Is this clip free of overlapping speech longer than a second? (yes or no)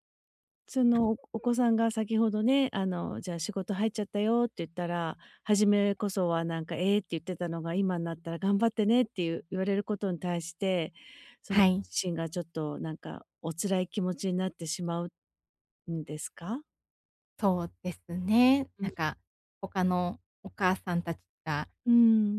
yes